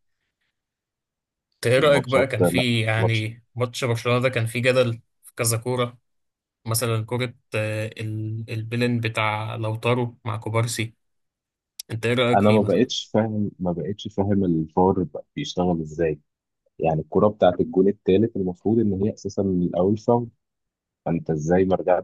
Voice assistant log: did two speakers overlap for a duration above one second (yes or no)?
yes